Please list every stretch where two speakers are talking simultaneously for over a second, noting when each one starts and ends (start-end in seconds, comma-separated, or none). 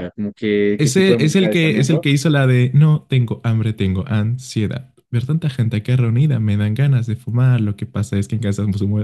0.8-2.1